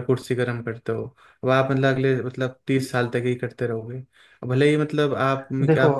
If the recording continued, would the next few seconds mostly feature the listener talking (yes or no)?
yes